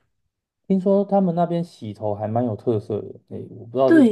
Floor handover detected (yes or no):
yes